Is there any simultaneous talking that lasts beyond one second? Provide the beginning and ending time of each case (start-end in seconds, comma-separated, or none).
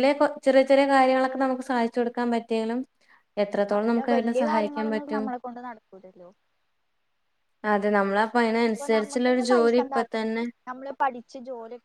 8.7-10.4